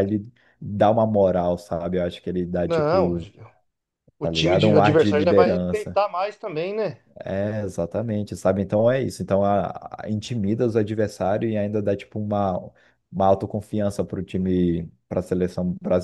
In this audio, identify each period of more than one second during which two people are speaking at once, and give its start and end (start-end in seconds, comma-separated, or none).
4.2-6.0